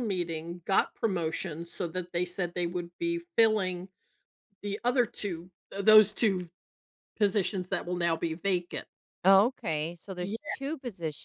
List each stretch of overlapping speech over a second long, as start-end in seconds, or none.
none